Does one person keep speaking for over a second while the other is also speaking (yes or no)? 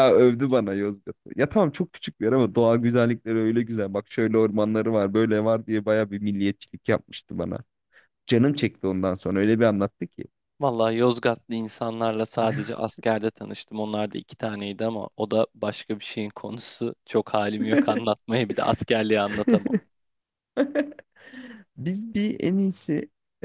no